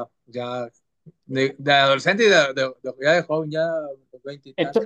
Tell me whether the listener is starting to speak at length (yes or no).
yes